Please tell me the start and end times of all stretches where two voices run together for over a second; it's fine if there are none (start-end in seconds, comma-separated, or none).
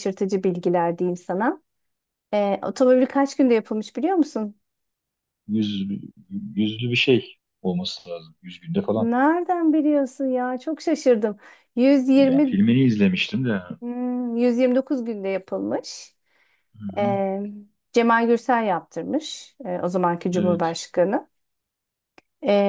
none